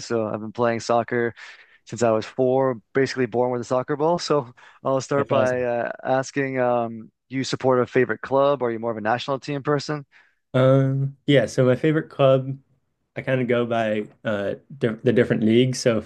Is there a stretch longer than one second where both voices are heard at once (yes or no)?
no